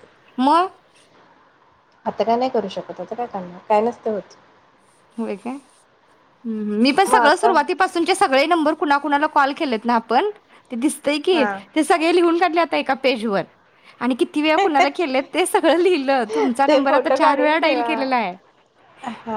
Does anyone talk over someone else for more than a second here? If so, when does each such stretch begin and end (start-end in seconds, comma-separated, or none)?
16.7-18.0